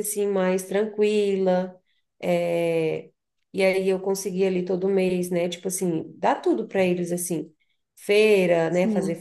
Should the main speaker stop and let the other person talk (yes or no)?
no